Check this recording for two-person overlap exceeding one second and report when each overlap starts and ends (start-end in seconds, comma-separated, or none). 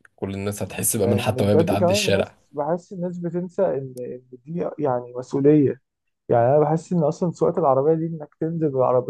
1.0-2.4